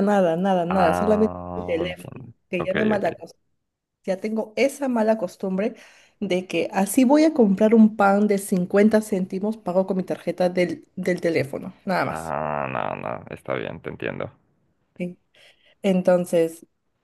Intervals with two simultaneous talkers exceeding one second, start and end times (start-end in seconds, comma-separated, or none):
0.7-3.1